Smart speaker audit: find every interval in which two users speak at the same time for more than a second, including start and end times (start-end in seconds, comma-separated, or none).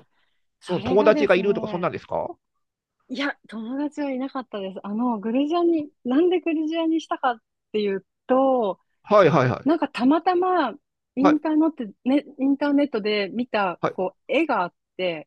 0.7-1.9